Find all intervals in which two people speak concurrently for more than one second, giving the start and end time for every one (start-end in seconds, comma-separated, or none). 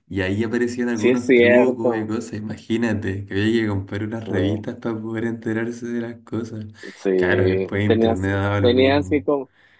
0.9-2.2, 7.1-9.2